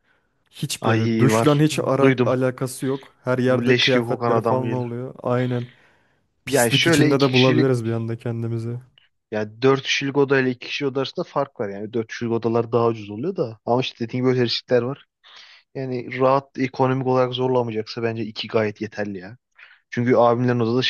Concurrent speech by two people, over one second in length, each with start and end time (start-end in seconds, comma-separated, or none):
0.8-2.3, 3.5-5.0, 6.5-7.7